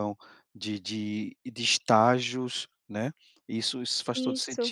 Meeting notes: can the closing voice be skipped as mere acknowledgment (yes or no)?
yes